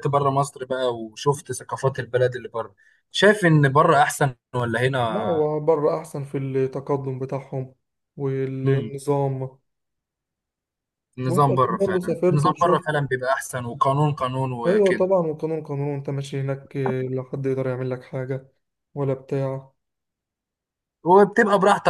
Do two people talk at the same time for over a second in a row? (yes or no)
yes